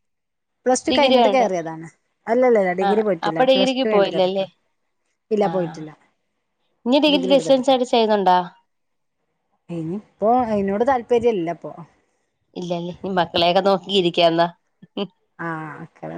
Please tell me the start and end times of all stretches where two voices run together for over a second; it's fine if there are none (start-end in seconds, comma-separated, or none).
2.9-4.5